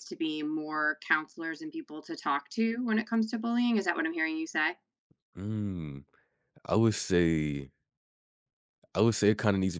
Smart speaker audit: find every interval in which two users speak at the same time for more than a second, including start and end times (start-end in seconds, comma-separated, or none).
none